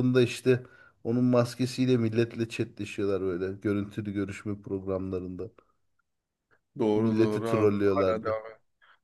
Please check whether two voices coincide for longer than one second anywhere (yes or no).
yes